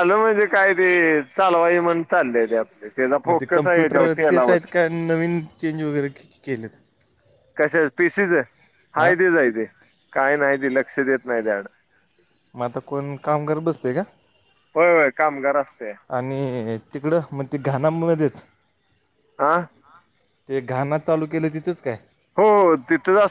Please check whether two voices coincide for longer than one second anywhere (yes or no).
yes